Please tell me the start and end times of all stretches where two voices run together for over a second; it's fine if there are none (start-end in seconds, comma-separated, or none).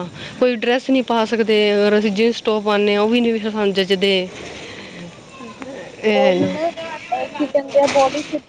none